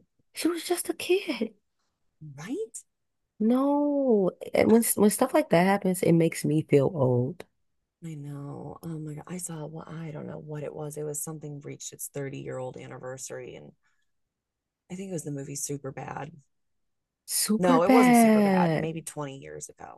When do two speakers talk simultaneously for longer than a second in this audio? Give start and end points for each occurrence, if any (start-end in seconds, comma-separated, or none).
17.6-18.9